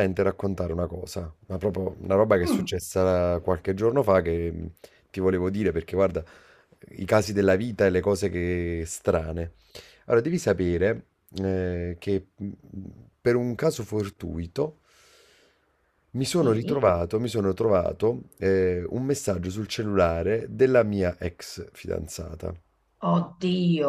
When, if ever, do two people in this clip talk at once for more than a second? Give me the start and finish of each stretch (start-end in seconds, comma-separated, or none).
none